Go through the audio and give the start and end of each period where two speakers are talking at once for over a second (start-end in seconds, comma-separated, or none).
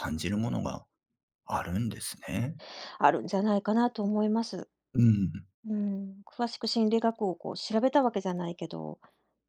none